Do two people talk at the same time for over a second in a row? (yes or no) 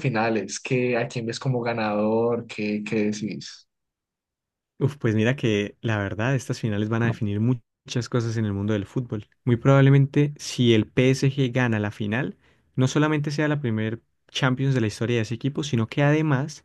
no